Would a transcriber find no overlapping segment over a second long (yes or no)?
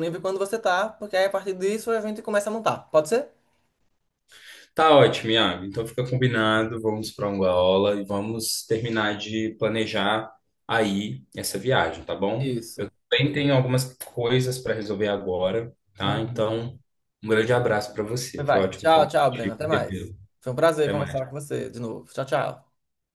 no